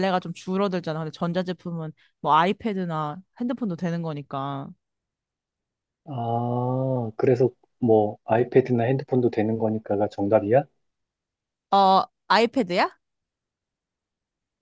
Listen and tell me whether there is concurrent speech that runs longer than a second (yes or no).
no